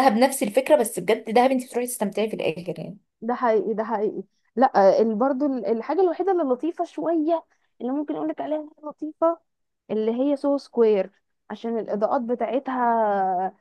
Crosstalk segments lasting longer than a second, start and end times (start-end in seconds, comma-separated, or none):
none